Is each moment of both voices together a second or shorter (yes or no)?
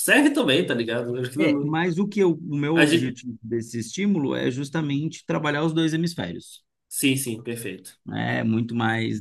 yes